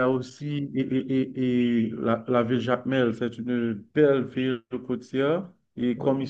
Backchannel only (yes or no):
yes